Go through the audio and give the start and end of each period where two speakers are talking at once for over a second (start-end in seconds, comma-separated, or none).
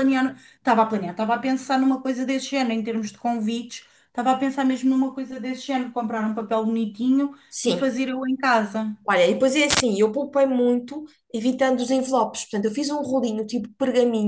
none